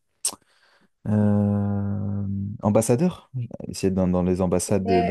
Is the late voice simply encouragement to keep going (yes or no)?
no